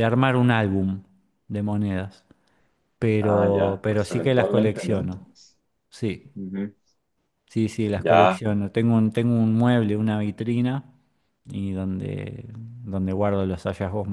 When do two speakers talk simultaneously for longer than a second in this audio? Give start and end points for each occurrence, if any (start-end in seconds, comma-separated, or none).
3.2-5.2